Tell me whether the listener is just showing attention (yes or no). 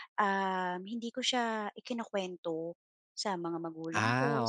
yes